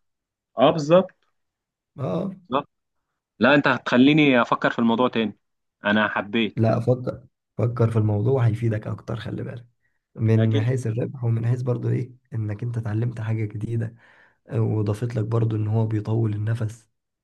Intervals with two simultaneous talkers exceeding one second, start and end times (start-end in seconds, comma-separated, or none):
none